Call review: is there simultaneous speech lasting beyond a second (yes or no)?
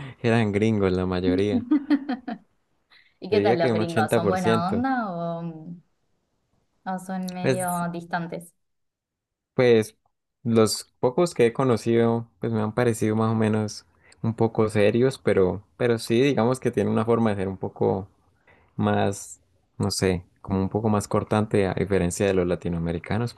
yes